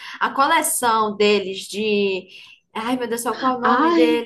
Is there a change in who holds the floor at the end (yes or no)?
yes